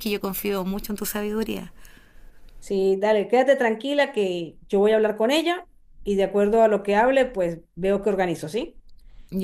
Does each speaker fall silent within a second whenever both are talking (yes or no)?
yes